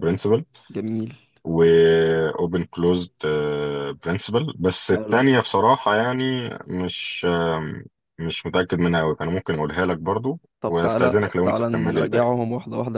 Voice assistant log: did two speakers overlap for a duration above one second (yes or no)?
yes